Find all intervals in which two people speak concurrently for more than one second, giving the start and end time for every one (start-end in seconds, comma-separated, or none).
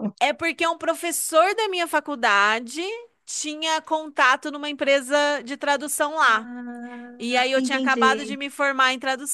7.2-8.4